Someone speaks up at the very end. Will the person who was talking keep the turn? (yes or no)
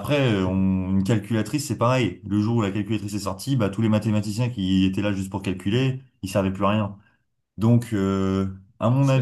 yes